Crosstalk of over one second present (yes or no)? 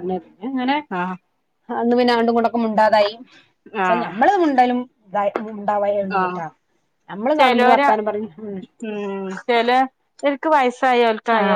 no